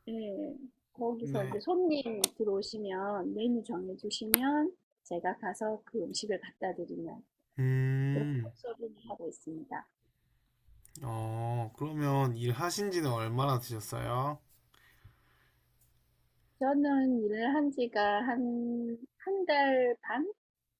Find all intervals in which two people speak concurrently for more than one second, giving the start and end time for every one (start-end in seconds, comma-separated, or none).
none